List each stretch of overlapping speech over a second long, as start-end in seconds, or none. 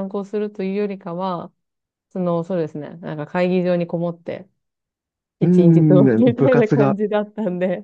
5.4-7.0